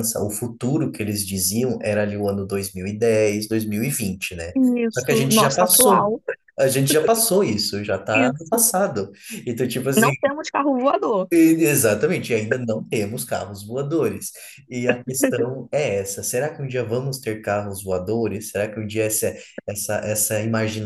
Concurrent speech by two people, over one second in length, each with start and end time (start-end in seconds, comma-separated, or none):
4.9-6.1